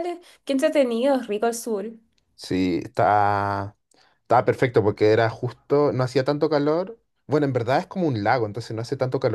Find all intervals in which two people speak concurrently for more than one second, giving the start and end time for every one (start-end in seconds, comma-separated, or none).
none